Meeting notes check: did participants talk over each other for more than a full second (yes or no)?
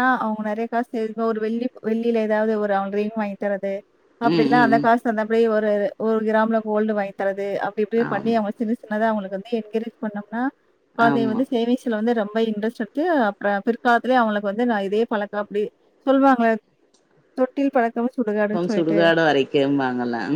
no